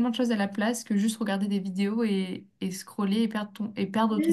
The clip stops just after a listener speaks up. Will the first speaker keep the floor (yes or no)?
no